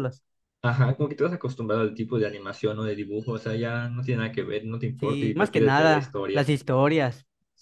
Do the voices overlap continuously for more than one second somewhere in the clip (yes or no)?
yes